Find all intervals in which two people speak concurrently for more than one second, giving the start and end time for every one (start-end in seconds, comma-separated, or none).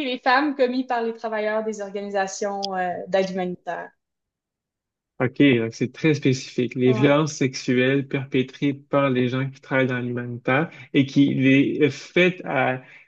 none